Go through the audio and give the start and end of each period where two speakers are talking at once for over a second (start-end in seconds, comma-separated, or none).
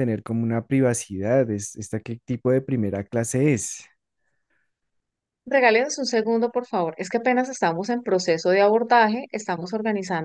none